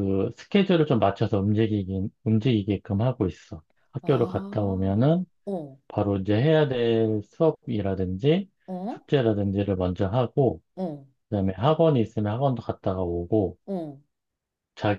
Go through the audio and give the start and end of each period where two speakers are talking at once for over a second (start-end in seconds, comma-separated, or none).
4.0-5.2